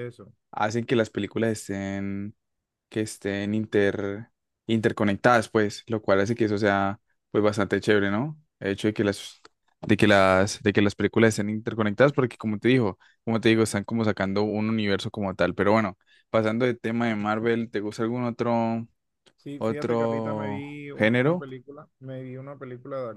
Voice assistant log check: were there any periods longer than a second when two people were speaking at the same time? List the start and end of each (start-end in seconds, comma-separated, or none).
19.6-21.4